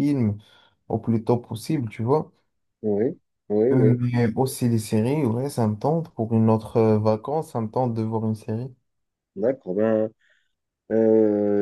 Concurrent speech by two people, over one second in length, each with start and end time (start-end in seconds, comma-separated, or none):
none